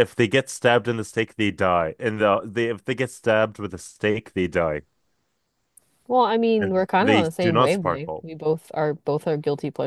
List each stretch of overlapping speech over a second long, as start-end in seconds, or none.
6.6-8.2